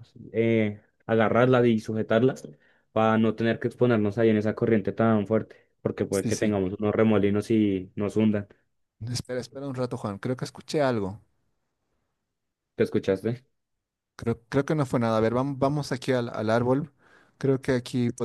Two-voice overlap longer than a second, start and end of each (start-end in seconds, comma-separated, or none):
none